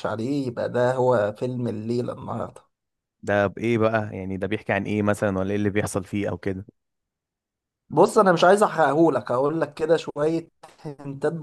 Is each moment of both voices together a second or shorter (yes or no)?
yes